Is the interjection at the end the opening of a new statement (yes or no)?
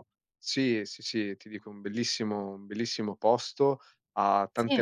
no